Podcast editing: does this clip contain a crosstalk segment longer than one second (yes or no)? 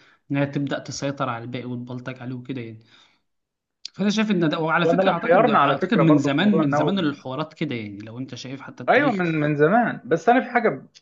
yes